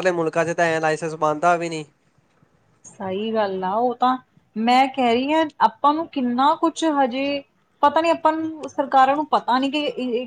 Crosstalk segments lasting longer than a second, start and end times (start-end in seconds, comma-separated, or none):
none